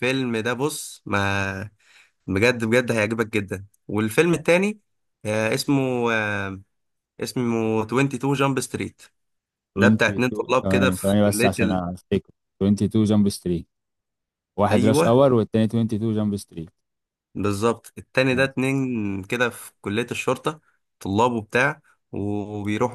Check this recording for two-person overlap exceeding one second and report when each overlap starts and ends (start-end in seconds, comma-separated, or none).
9.8-11.8